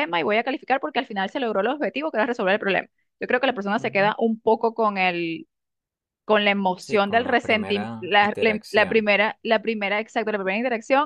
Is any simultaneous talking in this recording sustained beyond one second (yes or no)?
yes